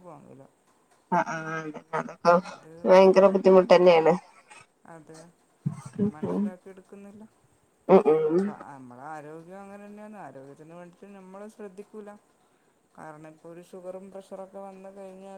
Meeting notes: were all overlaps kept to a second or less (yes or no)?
yes